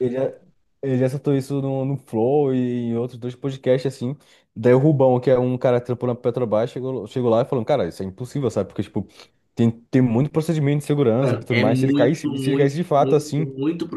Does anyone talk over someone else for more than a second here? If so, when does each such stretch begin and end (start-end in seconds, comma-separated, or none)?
11.2-13.5